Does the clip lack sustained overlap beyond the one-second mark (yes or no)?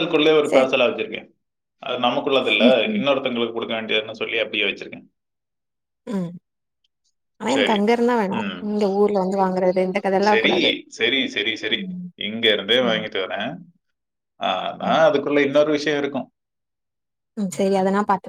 yes